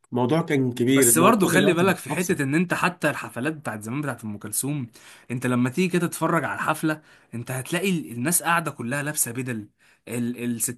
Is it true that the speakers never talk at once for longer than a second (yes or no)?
no